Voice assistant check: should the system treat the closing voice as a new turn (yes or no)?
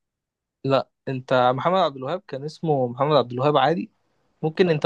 no